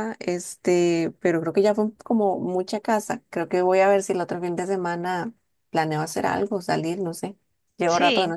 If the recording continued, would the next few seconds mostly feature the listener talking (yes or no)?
yes